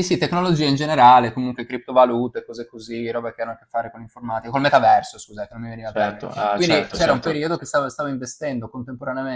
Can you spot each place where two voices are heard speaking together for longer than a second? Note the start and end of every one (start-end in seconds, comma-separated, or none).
5.8-7.5